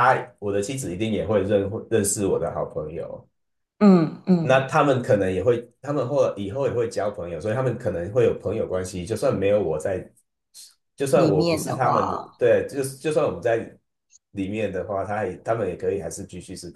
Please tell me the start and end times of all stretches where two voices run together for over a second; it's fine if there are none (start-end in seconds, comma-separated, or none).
11.1-12.4